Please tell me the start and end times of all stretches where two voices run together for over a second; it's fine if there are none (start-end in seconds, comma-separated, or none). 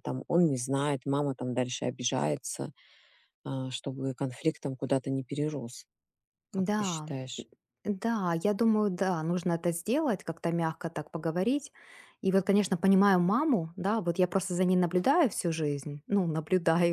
none